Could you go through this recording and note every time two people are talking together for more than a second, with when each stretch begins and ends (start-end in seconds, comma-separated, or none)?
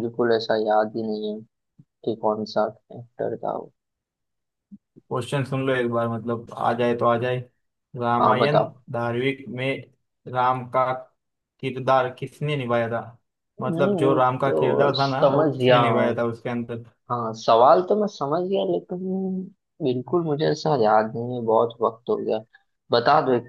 13.7-15.8